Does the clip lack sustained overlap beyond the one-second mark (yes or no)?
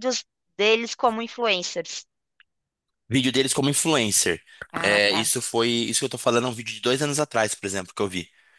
yes